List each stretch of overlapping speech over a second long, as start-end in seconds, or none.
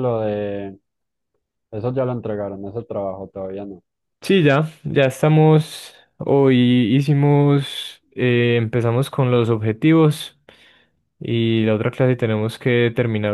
none